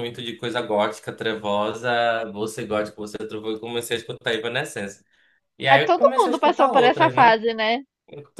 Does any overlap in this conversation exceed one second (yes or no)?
yes